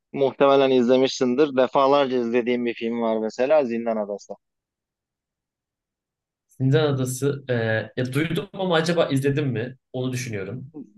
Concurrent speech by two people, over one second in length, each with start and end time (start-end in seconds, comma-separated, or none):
none